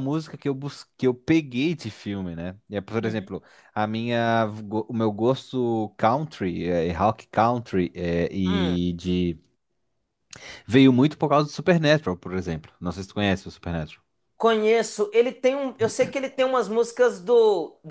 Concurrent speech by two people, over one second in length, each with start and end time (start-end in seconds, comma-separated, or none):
none